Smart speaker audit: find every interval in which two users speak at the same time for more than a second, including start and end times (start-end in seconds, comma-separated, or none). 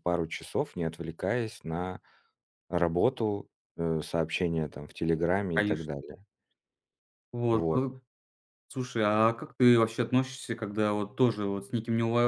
none